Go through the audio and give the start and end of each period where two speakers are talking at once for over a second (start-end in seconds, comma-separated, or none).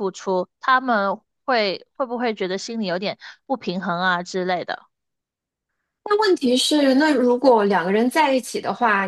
none